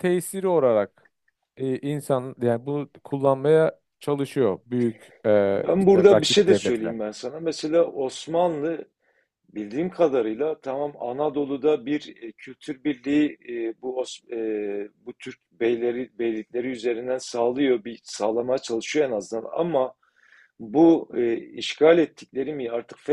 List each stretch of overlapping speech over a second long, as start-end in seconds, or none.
5.5-6.9